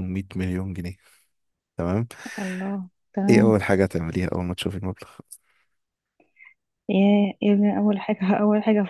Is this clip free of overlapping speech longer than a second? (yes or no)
yes